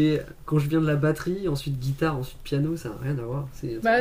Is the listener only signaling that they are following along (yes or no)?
no